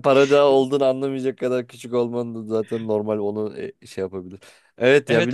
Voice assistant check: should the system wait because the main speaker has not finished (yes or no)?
no